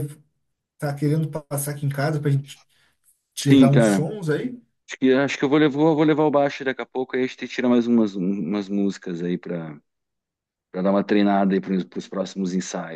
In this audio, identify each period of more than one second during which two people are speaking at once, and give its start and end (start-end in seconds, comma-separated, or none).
none